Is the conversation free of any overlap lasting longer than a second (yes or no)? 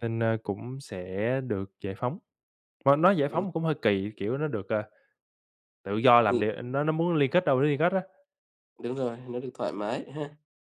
yes